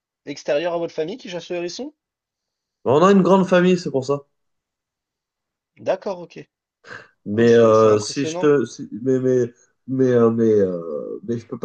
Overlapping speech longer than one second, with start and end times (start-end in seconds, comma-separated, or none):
7.3-8.5